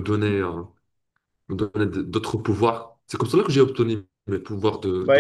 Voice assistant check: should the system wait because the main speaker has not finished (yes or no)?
no